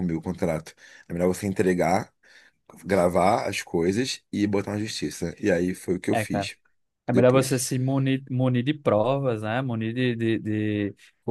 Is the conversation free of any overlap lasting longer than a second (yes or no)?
yes